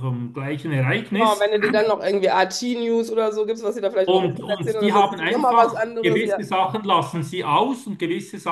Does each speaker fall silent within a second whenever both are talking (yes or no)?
no